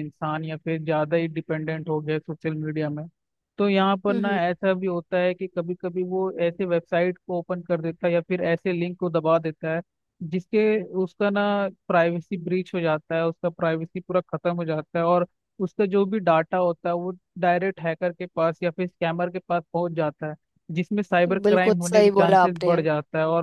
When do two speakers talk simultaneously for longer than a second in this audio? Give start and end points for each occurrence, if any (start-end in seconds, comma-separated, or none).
21.4-22.8